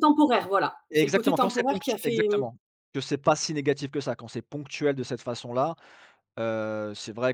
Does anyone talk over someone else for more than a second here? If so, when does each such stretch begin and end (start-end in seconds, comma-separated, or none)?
0.9-2.2